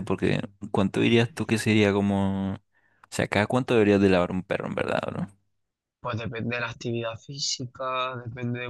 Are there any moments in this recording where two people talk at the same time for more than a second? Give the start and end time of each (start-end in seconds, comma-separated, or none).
none